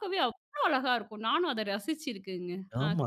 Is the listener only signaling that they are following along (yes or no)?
no